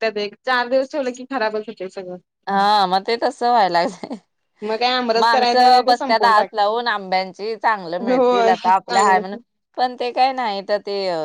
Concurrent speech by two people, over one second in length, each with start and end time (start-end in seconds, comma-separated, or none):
5.2-6.5, 8.1-9.4